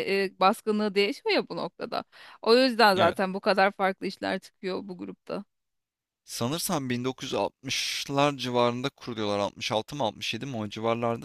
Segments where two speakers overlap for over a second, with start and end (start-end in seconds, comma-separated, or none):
none